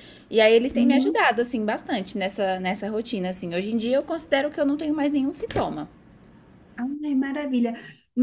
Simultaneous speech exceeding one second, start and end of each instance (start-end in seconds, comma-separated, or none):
none